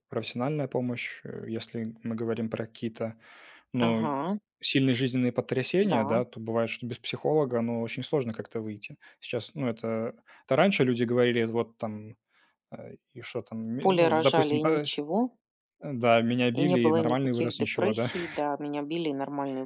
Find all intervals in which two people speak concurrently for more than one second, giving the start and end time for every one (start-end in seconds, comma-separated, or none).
13.8-15.0, 16.5-18.1